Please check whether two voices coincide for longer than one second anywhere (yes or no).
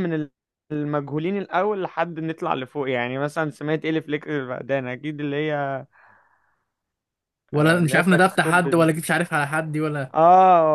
yes